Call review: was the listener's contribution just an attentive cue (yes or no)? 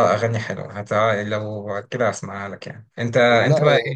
yes